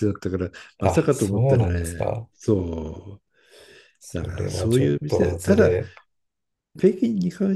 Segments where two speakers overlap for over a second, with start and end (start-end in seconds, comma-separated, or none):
0.8-2.3, 4.0-5.8